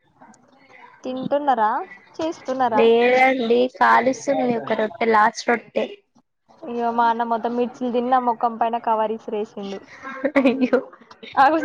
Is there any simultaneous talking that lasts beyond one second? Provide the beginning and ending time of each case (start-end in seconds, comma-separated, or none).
none